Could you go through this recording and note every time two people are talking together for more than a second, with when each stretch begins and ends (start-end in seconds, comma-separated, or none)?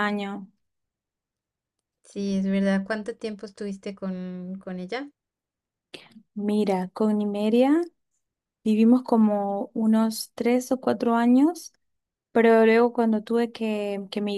none